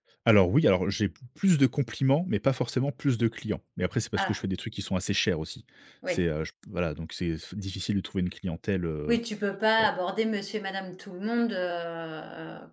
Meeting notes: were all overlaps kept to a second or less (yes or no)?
yes